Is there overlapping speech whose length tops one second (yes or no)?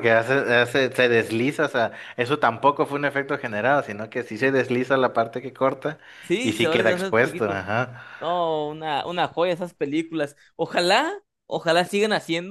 yes